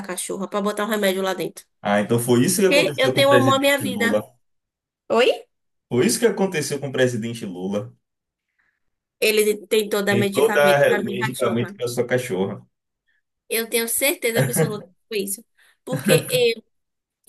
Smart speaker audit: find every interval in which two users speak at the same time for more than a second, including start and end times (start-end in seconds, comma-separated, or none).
2.7-4.2, 10.1-11.8